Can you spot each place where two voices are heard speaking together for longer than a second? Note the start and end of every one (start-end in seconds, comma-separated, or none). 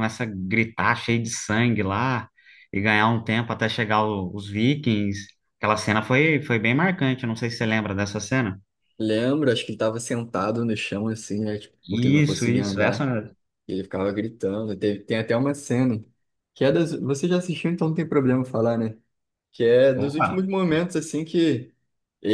11.9-13.1